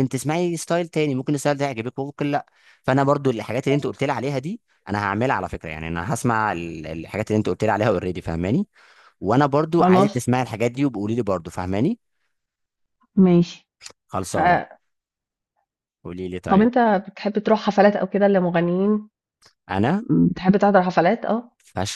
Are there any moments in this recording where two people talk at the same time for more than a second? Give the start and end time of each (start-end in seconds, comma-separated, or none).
none